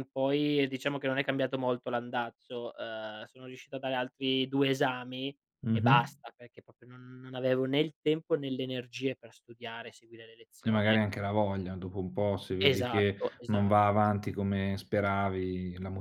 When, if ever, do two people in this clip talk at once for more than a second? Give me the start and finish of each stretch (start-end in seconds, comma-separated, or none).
12.6-14.0